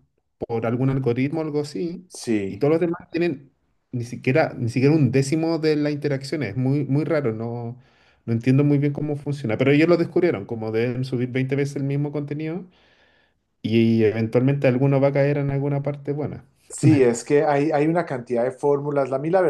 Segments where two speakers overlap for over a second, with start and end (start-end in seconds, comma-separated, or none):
none